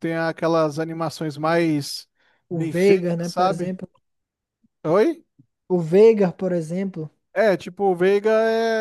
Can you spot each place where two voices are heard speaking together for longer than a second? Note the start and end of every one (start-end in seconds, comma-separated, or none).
2.5-3.8